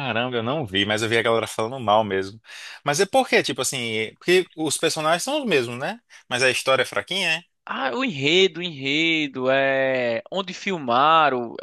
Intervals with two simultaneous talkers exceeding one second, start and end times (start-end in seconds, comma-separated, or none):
none